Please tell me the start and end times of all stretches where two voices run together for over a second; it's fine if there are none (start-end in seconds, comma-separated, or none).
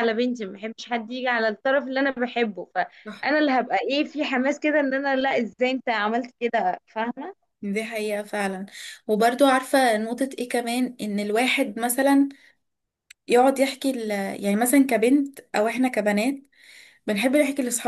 none